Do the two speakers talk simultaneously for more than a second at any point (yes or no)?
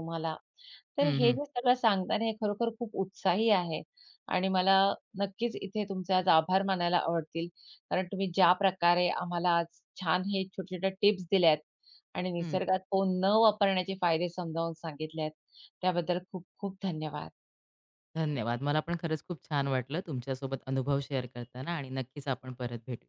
no